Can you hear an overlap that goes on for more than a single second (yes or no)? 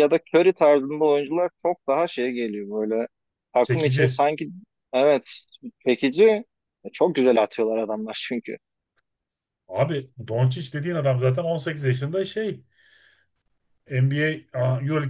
no